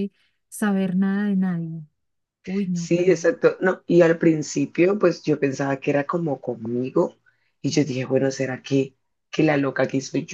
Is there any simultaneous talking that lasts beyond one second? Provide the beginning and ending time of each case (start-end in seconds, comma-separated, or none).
none